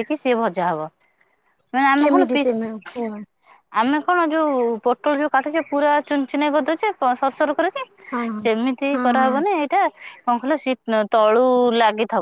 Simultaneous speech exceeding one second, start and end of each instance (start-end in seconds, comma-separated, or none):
none